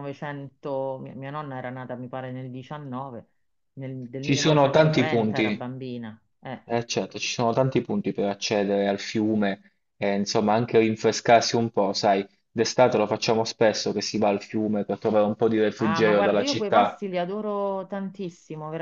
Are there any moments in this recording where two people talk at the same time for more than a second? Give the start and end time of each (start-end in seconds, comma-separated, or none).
4.2-5.6, 15.8-17.0